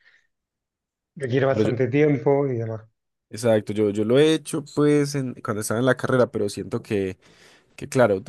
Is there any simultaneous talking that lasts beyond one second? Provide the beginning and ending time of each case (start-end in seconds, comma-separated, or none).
none